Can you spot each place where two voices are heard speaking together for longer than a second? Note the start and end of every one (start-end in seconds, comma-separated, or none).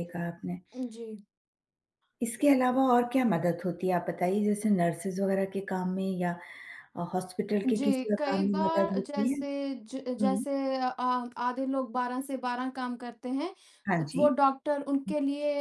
7.7-9.4